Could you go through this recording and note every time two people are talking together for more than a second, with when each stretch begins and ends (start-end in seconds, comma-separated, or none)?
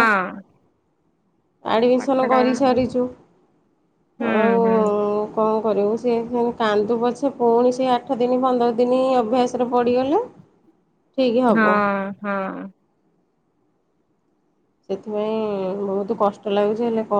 none